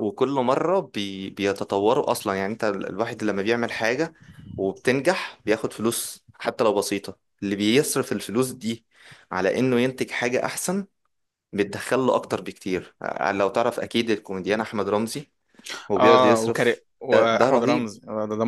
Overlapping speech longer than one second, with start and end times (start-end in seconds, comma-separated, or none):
16.0-17.9